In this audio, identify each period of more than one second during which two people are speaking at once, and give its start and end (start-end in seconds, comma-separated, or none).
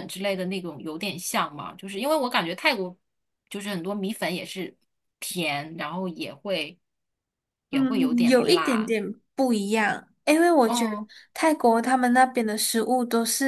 7.7-8.9